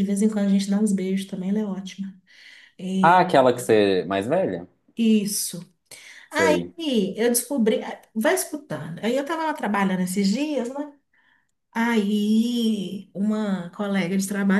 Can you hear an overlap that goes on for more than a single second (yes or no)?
no